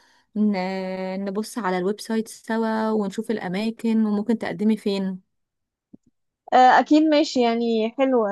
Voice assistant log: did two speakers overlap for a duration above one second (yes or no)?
no